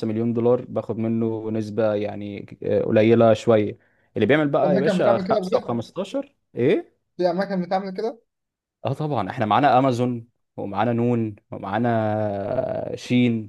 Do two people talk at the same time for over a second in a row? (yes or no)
yes